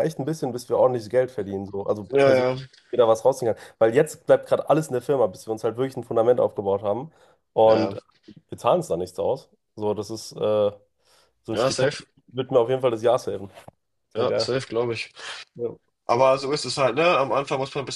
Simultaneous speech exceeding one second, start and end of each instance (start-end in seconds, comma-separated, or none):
none